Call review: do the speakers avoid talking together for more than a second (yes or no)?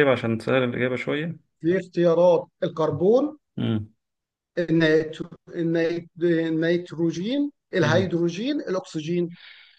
yes